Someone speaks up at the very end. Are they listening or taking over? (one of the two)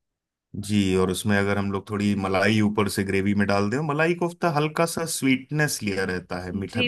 taking over